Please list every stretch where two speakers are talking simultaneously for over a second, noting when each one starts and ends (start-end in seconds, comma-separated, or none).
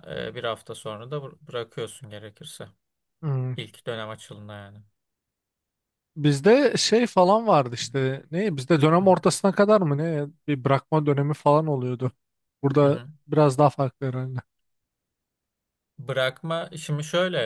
none